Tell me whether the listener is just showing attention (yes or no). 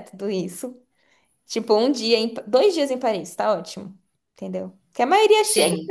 yes